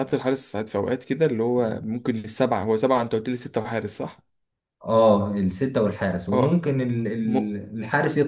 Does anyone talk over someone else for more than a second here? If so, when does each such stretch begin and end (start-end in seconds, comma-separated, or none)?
none